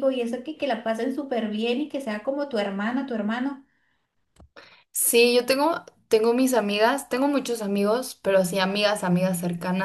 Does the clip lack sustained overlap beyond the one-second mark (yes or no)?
yes